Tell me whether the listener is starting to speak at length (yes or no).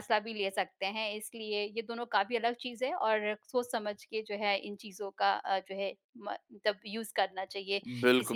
yes